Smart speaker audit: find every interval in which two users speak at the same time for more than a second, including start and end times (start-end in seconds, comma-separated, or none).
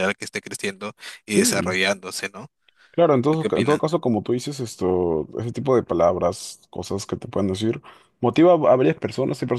none